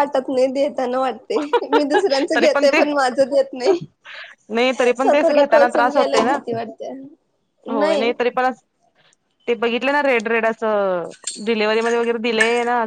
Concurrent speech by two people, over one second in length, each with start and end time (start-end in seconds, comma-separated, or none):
5.0-6.4